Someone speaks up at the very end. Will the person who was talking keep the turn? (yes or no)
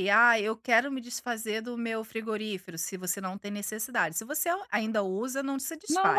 no